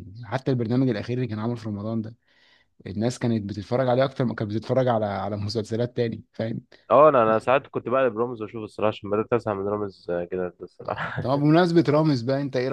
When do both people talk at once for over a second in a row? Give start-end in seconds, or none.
none